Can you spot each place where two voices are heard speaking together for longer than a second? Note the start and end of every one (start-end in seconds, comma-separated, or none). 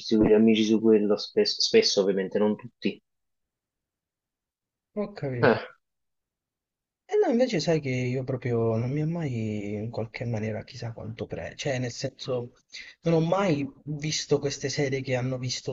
none